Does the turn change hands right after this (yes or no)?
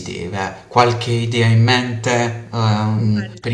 no